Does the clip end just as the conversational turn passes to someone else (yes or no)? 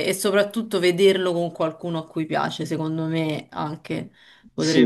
no